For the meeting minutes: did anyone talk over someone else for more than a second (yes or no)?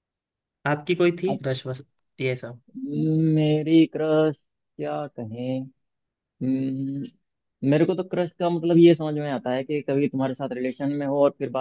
no